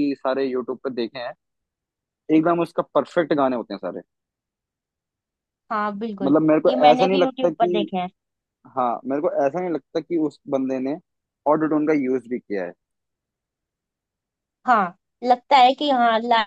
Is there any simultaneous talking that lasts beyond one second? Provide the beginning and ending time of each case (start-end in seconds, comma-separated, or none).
6.2-7.9